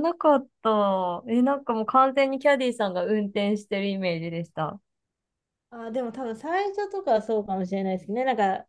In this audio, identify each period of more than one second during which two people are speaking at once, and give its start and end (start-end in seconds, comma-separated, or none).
none